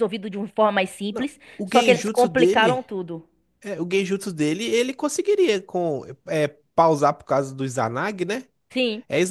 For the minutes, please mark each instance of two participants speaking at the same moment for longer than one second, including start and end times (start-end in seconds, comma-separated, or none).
1.1-2.9